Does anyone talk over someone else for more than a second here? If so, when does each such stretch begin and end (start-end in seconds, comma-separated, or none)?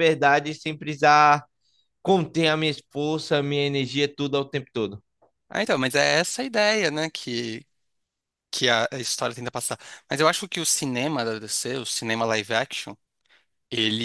none